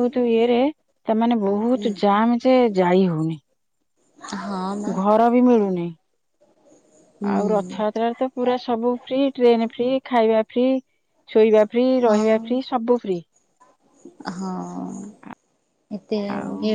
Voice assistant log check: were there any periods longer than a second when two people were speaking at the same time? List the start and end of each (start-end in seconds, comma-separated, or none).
none